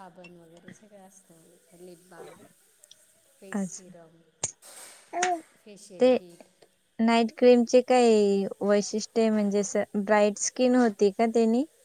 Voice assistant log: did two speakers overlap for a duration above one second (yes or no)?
no